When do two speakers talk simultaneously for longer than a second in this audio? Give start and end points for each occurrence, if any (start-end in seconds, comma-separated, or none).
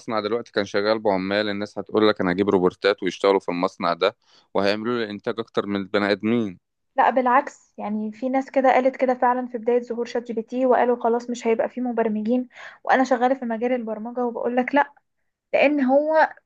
none